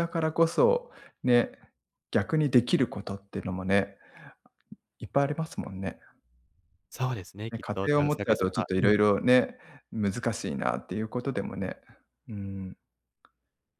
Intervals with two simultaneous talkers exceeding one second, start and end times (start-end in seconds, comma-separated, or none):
7.5-8.9